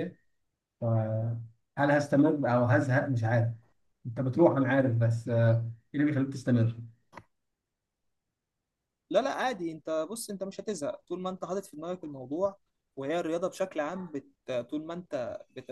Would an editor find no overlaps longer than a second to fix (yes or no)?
yes